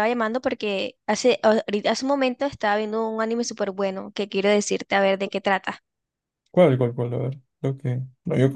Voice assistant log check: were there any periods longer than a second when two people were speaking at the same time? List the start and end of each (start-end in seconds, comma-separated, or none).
none